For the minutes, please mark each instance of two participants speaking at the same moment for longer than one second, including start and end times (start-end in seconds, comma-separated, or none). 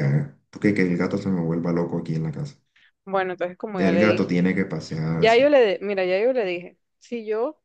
none